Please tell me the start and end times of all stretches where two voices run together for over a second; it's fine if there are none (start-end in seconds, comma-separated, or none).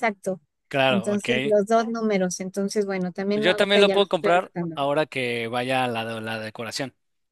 3.3-4.9